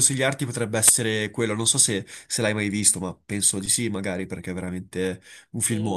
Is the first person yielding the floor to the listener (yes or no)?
yes